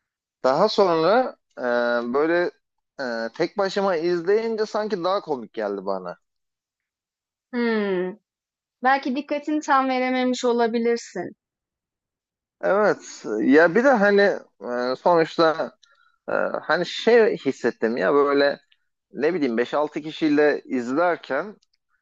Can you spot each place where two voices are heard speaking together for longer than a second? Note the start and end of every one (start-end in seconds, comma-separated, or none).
none